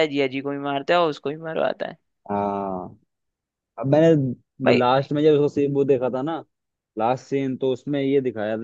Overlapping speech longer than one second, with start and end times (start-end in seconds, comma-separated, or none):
none